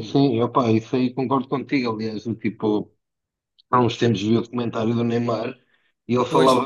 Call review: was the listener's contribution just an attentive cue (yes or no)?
yes